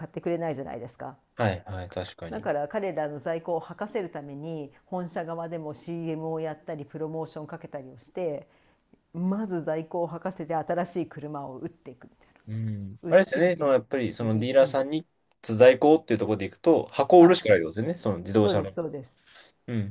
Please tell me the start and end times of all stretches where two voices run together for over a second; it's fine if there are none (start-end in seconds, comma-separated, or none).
13.0-14.8